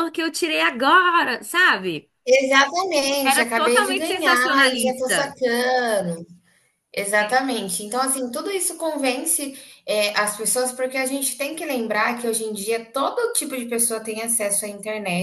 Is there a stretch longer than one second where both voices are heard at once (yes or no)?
yes